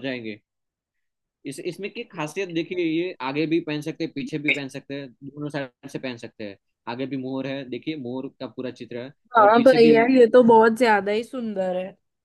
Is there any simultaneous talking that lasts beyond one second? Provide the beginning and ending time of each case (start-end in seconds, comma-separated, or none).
none